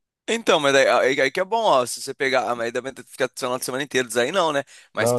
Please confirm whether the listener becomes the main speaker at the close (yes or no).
no